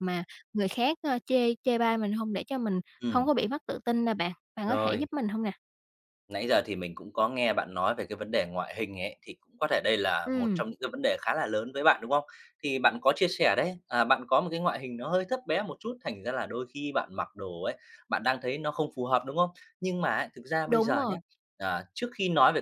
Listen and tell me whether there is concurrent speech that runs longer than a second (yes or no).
no